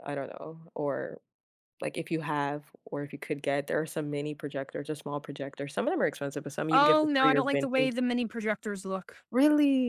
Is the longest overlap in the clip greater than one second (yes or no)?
yes